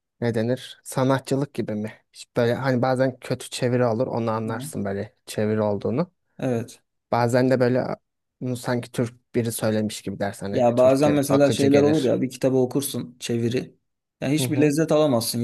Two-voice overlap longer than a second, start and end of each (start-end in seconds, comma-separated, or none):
10.5-12.2